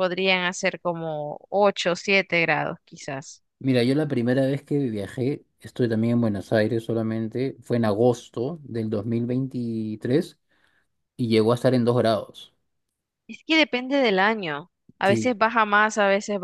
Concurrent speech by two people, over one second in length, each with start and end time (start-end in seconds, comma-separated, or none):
none